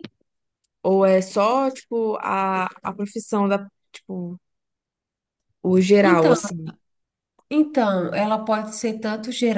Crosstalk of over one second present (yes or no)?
no